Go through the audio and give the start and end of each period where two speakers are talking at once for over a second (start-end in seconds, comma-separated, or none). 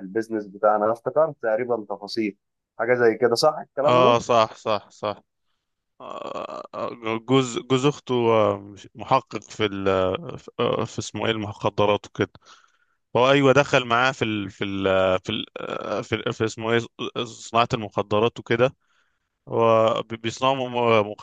none